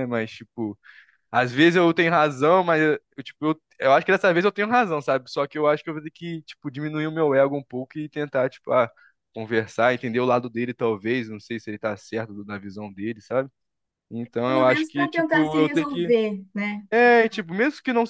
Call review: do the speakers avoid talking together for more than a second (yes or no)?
no